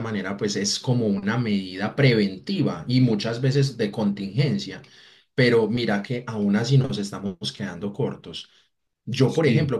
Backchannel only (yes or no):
yes